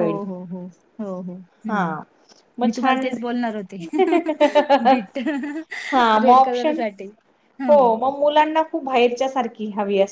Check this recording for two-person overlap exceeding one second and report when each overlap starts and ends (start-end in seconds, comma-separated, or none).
none